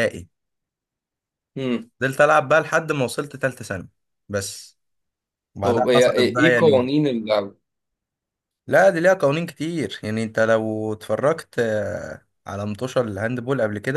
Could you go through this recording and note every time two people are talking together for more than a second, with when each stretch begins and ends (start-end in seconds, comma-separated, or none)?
5.6-6.9